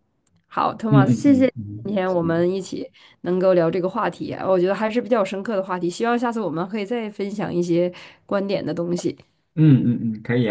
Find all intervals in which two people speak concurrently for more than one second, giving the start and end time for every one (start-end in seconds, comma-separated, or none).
0.9-2.5